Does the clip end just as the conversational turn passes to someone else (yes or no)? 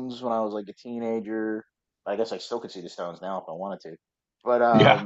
no